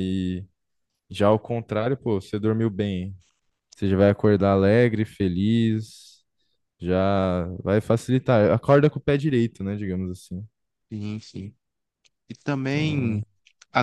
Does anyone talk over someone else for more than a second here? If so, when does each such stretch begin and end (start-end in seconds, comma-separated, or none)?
none